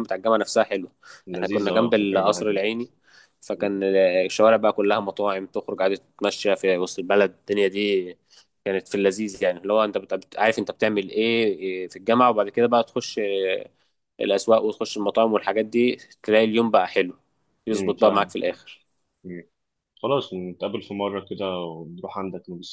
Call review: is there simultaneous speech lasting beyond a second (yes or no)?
yes